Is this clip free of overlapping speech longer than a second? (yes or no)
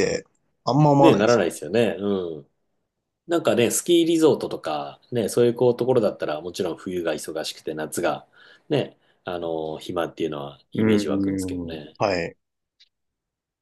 no